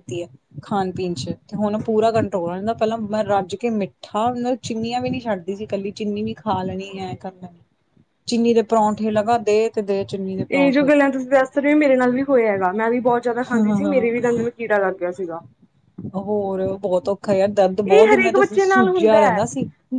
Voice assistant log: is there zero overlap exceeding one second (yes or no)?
no